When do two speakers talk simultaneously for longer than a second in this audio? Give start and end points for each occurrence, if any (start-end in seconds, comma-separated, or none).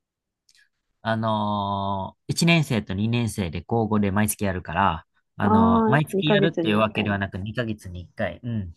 5.4-7.2